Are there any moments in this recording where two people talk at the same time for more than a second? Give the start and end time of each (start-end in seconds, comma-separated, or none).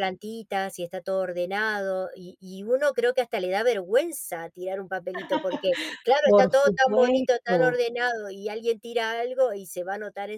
6.2-7.8